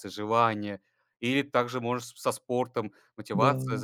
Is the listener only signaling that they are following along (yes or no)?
yes